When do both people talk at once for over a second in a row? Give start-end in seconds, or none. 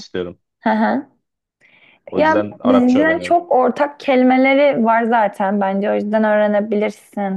2.1-3.4